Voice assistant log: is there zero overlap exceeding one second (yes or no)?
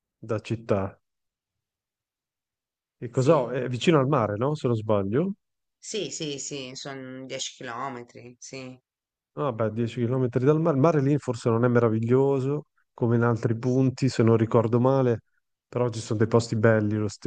yes